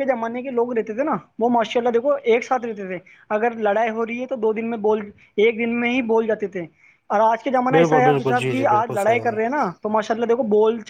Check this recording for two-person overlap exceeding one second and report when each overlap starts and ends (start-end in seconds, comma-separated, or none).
7.7-9.3